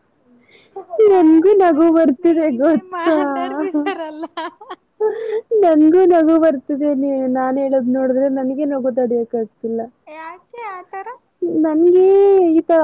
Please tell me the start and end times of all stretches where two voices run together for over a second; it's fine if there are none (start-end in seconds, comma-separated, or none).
1.1-3.1